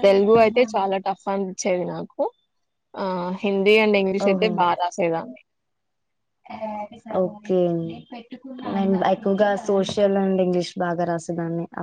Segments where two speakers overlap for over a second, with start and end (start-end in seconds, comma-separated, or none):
none